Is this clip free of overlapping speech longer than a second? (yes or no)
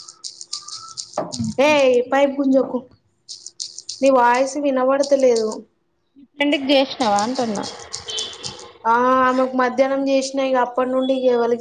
yes